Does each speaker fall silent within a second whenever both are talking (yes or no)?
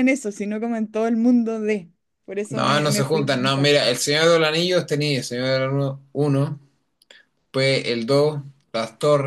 no